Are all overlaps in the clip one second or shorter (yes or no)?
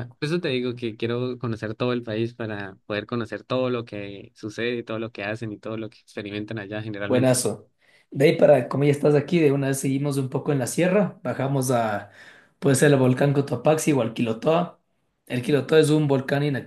yes